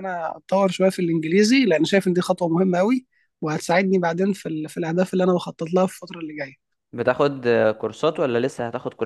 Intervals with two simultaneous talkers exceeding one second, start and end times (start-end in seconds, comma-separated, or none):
none